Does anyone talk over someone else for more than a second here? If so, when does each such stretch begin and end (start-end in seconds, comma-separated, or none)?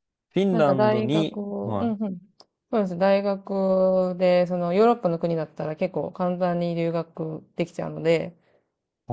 0.5-1.9